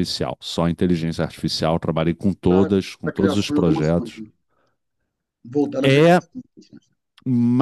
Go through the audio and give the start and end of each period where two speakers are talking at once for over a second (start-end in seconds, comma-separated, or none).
2.5-4.2